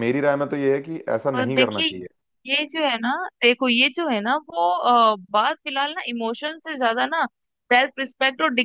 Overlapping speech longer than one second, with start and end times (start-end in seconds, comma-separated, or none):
none